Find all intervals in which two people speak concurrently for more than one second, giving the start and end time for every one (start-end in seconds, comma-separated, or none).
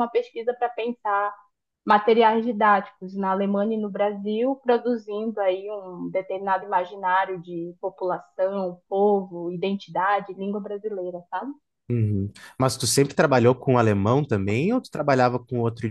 none